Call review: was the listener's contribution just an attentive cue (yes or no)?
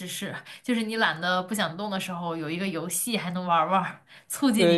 no